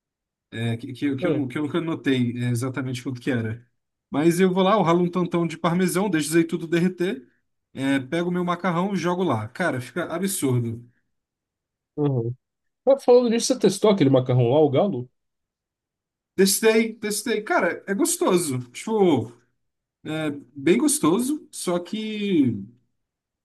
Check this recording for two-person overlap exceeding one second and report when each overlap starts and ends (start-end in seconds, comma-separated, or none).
none